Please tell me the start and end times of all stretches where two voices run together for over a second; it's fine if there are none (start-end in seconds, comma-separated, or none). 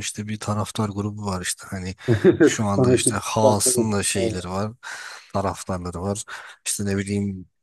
2.4-4.4